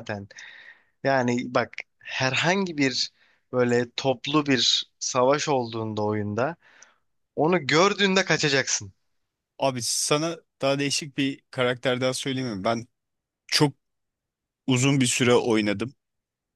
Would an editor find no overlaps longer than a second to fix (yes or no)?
yes